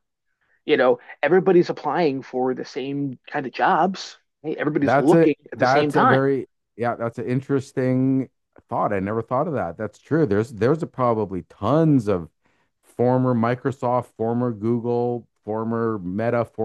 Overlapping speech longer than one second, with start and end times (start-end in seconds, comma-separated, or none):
4.8-6.2